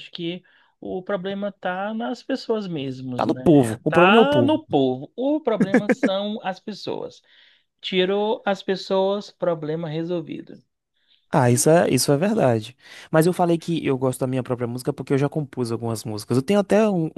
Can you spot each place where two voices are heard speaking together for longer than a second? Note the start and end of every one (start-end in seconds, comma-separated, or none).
3.1-4.6